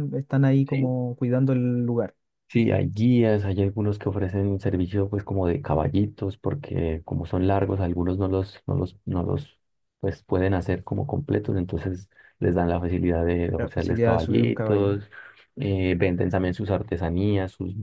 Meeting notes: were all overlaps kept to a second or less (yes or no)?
no